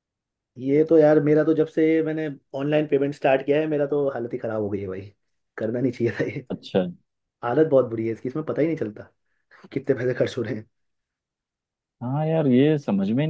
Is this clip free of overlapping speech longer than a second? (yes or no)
yes